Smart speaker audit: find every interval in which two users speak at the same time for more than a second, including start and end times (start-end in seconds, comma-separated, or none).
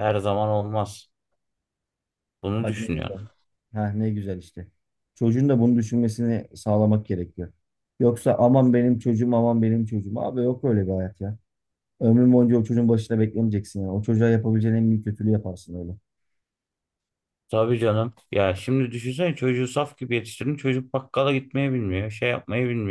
none